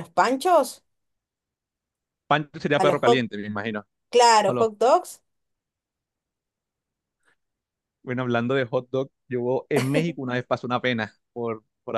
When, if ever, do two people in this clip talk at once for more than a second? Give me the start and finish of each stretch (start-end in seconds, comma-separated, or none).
none